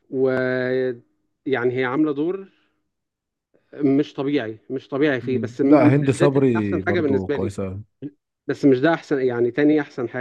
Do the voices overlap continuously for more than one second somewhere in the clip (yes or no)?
yes